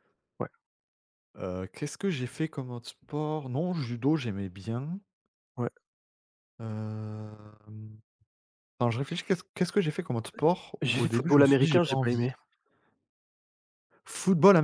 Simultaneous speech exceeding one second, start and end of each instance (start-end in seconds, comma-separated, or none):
10.8-12.3